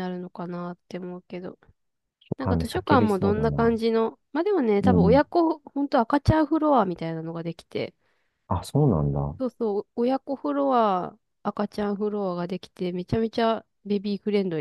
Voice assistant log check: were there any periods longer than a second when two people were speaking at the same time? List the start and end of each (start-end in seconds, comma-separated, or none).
2.4-3.7